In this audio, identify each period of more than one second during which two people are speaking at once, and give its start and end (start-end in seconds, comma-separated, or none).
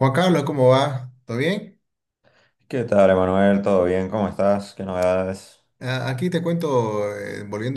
none